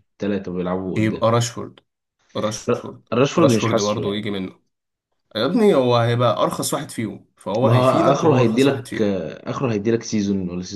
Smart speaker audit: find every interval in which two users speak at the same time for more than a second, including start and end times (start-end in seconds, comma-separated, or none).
2.7-4.3, 7.6-9.2